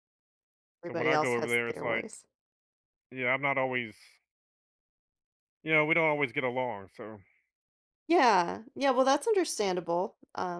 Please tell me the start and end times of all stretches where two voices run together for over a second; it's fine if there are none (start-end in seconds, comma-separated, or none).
0.8-2.0